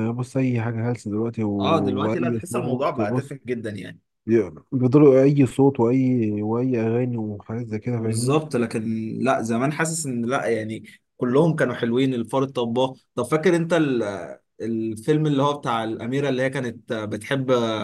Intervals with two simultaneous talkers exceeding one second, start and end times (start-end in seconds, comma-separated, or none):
2.0-3.4